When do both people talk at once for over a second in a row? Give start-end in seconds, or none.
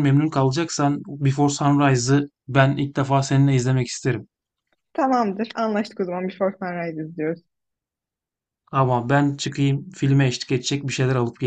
none